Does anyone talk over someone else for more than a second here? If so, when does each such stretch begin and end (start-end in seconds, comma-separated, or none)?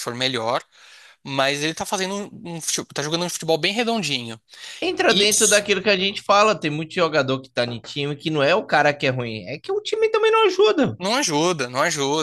none